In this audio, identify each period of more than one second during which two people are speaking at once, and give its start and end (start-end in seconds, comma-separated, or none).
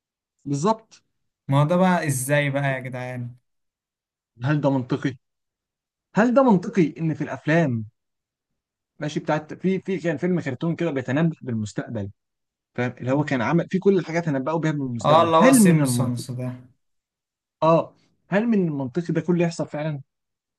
15.0-16.2